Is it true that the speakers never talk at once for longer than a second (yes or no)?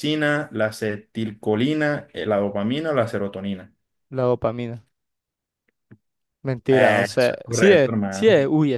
no